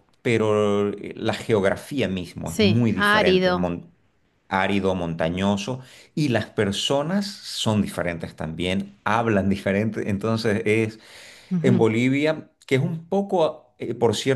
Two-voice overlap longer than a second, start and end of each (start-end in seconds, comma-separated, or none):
2.4-3.7